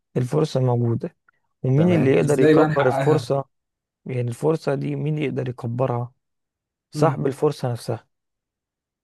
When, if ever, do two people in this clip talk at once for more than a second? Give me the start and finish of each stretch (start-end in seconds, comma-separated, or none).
1.8-3.2